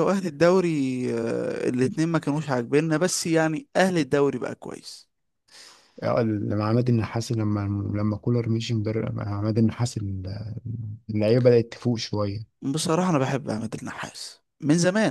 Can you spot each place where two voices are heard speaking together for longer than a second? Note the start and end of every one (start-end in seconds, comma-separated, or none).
none